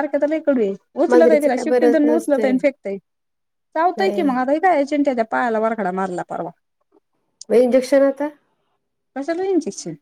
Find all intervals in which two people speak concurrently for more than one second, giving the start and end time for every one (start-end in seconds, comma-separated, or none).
1.1-2.5